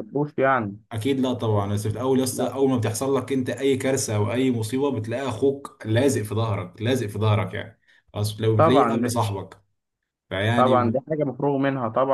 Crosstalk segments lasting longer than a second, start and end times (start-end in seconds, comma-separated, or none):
none